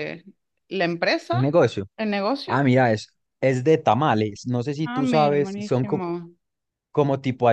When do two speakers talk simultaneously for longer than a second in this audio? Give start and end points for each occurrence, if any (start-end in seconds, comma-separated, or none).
4.8-6.0